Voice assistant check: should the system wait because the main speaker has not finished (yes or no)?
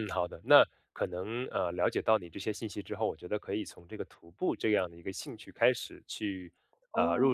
yes